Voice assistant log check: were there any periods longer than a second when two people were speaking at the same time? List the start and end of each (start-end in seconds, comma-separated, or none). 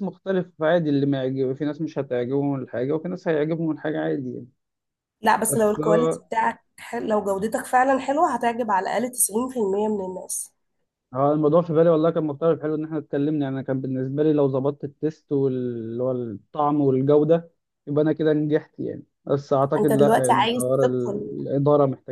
19.8-21.4